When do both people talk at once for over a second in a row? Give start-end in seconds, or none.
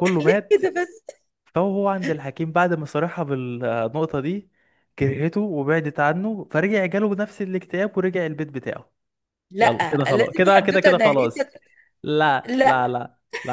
9.6-11.5